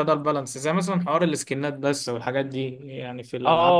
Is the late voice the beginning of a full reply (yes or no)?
yes